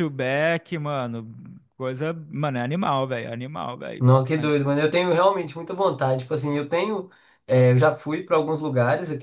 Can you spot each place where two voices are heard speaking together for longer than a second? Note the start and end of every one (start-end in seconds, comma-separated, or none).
none